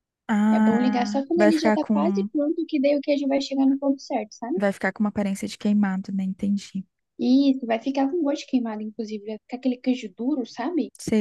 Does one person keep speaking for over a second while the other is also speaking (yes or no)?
yes